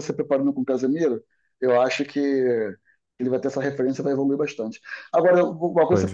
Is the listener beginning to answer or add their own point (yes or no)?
no